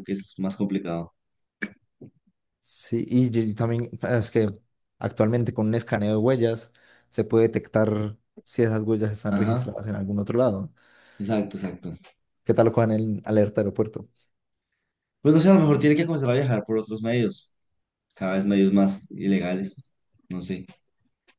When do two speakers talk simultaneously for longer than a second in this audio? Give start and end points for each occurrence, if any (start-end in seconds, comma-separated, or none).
none